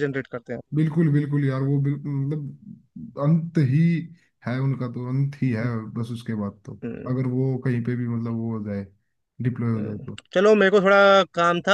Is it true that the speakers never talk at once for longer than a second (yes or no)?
yes